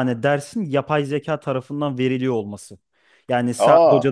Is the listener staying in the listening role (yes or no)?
yes